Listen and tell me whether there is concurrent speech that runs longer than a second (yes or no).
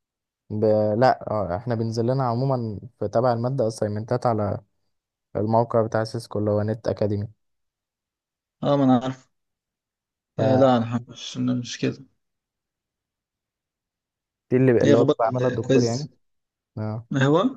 yes